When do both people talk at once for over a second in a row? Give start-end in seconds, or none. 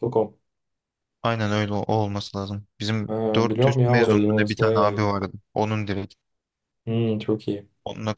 3.1-5.1